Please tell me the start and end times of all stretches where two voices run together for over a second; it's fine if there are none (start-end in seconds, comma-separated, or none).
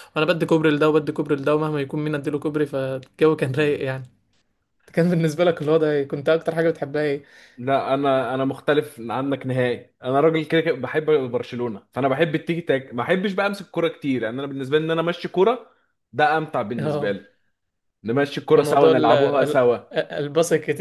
18.6-19.8